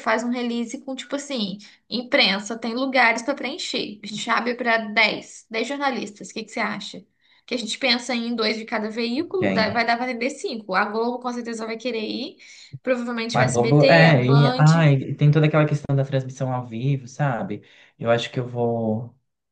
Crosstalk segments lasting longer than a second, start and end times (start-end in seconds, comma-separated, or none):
13.3-14.7